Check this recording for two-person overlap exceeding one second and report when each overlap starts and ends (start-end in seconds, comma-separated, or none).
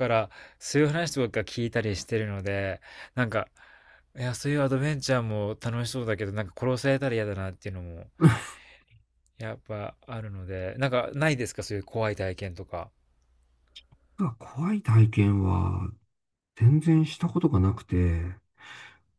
none